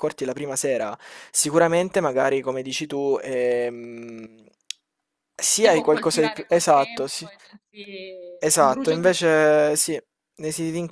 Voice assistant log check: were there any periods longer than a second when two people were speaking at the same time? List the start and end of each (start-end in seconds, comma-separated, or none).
5.5-7.3, 8.4-9.8